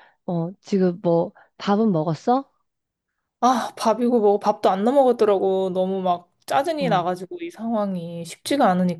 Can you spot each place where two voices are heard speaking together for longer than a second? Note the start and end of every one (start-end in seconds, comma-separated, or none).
none